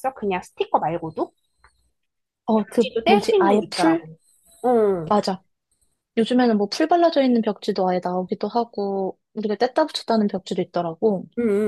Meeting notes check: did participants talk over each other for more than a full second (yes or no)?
yes